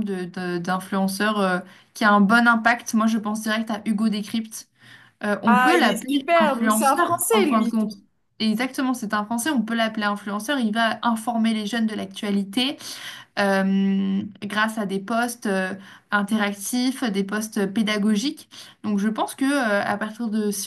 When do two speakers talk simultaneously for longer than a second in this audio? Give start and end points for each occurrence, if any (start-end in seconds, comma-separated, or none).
5.5-7.7